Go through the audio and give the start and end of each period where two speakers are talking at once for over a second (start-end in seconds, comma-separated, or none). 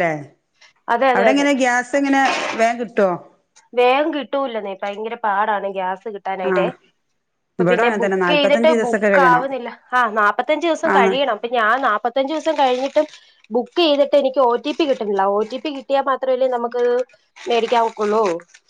7.6-9.4